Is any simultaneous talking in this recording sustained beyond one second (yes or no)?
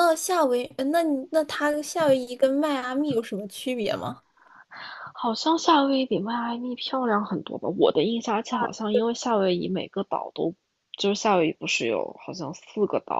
no